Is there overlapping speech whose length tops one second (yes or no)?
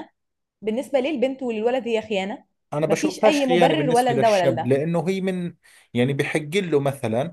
yes